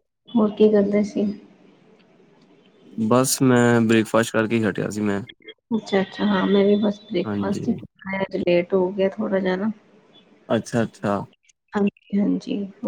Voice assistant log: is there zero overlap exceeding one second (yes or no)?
yes